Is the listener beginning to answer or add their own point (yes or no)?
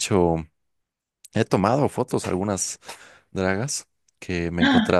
no